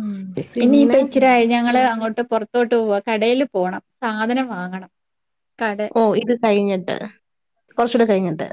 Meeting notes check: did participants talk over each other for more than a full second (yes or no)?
no